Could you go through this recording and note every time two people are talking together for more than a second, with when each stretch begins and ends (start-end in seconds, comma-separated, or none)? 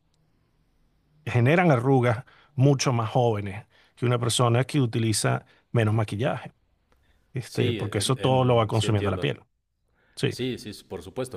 7.4-9.3